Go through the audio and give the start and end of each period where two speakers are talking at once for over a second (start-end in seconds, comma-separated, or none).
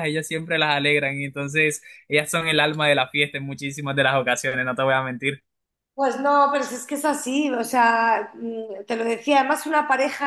none